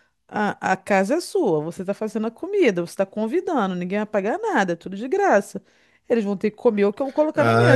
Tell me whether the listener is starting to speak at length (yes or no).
yes